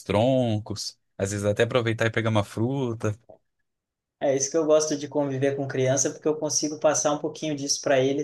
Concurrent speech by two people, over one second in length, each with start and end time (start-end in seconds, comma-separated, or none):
none